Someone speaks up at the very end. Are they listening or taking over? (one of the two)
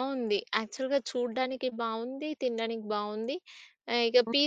listening